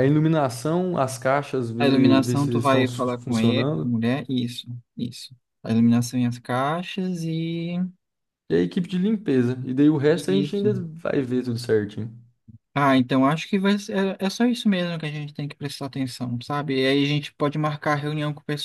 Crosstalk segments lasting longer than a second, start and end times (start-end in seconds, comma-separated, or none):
1.8-4.0